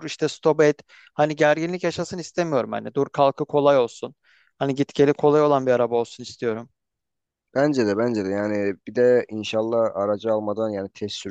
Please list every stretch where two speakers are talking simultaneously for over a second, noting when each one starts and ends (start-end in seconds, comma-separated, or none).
none